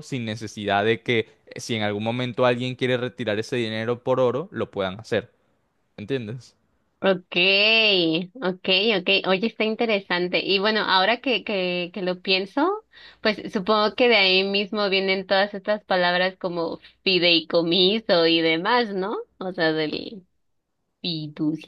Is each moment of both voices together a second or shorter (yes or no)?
yes